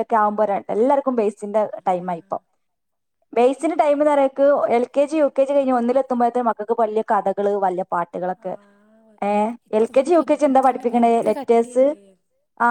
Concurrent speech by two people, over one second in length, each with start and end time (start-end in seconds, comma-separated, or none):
9.8-11.8